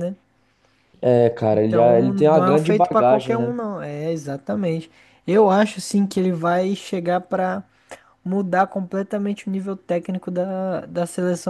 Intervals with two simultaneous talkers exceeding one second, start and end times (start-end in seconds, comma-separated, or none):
1.5-3.5